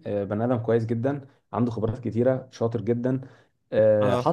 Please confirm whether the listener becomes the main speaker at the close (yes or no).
no